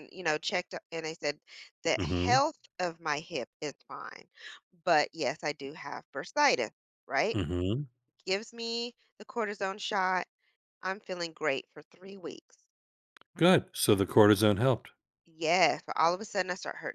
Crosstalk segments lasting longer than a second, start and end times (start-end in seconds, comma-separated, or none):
none